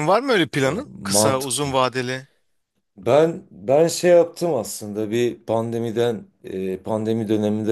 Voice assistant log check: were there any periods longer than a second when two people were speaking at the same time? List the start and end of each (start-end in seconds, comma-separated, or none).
0.6-1.8